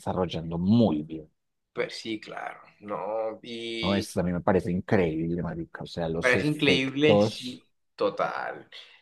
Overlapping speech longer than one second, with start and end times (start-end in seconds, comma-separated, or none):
6.2-7.6